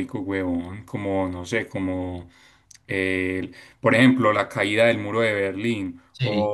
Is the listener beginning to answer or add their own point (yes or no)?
no